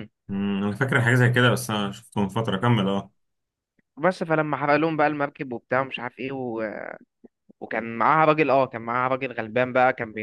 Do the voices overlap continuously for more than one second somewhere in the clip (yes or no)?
no